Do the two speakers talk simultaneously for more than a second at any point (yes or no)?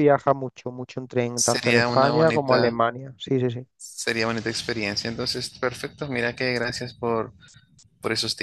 yes